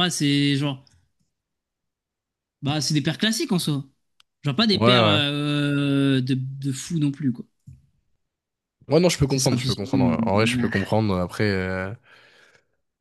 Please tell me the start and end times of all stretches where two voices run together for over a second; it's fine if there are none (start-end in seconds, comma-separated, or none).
9.3-10.9